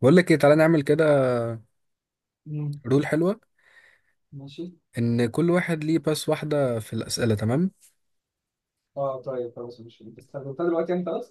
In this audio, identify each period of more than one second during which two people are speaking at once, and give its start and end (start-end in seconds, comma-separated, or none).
none